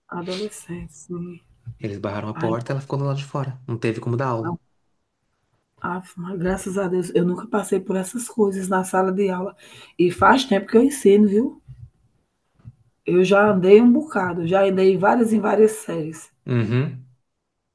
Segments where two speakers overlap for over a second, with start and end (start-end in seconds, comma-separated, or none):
none